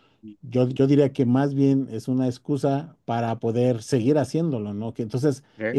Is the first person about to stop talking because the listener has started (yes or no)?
no